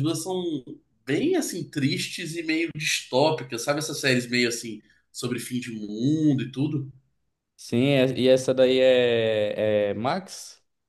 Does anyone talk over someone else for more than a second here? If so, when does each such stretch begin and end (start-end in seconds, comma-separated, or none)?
none